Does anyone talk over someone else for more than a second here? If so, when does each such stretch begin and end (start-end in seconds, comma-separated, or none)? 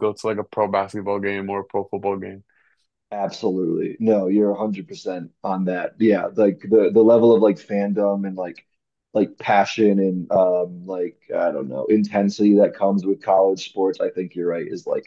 none